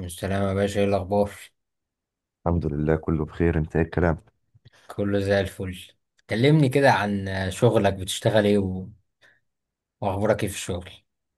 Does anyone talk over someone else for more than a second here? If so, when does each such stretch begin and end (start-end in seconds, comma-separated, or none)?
none